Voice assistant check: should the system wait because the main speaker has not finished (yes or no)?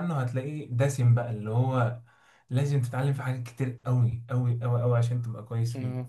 yes